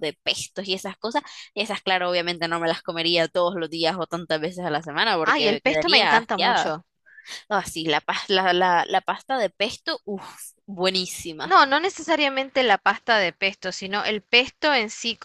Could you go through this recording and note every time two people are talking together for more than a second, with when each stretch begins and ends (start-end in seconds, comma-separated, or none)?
5.2-6.8